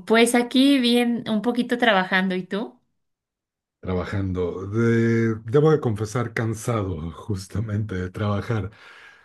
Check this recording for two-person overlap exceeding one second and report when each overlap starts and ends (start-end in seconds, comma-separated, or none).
none